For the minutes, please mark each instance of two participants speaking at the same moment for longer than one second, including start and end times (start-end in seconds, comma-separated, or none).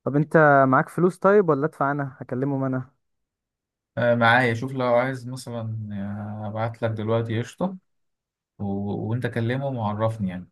none